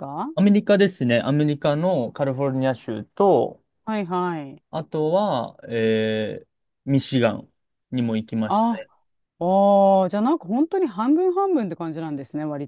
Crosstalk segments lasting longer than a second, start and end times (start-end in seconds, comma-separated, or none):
none